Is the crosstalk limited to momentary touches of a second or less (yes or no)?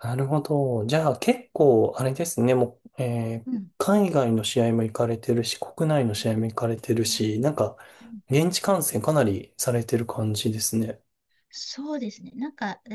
yes